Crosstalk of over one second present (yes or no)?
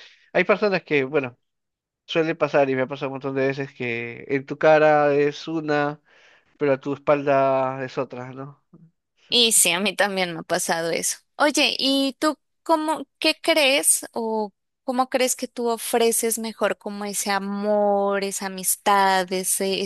no